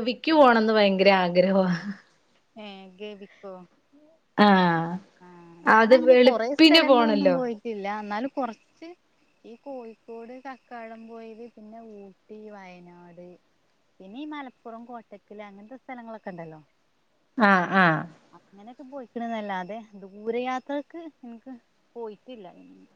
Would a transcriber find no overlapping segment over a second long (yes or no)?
no